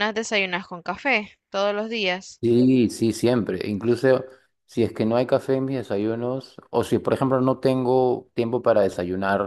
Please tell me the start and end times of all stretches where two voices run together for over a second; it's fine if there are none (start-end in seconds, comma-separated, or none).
none